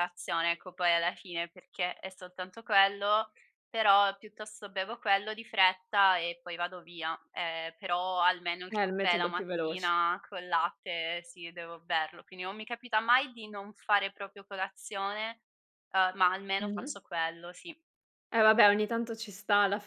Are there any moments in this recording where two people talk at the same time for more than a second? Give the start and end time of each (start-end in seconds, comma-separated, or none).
8.7-9.9